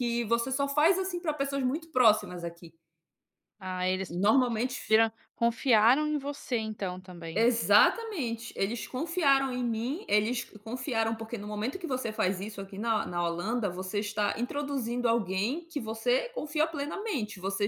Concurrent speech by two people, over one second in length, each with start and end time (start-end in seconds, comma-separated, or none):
none